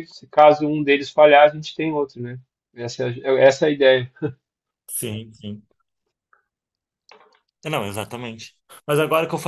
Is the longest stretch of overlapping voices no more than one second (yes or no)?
yes